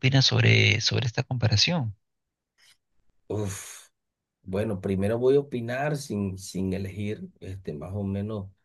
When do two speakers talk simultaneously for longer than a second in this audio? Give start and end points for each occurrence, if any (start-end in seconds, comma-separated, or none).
none